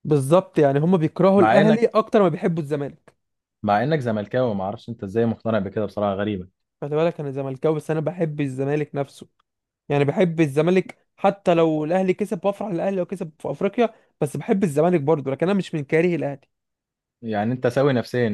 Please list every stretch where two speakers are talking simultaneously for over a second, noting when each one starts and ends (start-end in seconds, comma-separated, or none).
none